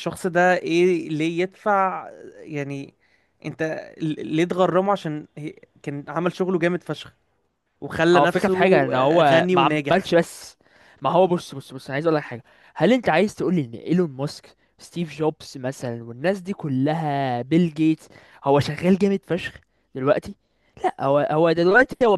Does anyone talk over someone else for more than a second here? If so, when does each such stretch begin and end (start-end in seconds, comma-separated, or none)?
8.1-10.1